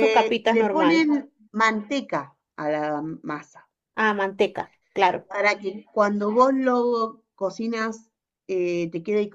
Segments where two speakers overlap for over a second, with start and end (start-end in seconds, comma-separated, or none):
none